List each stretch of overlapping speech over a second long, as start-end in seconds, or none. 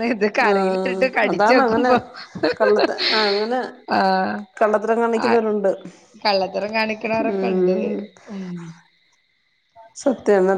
0.5-1.9